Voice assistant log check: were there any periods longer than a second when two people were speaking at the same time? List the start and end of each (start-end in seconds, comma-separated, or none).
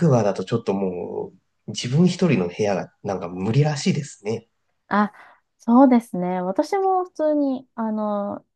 none